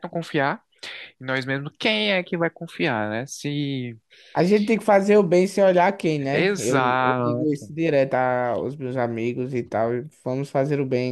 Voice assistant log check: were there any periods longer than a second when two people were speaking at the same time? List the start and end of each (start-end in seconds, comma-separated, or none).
6.3-7.7